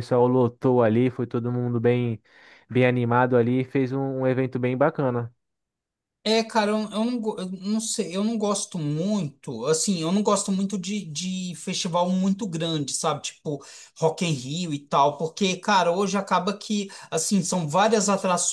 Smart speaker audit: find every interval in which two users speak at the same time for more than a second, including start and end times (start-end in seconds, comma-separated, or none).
none